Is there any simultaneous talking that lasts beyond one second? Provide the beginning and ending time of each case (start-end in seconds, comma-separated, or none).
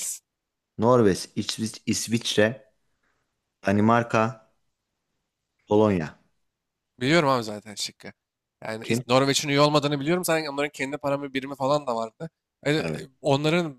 none